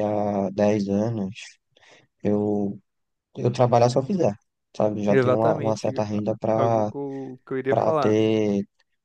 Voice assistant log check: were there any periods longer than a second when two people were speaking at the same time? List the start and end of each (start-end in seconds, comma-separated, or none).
5.1-6.9